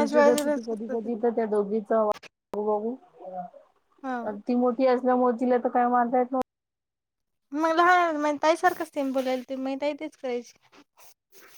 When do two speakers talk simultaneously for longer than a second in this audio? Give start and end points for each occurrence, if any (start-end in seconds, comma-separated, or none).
none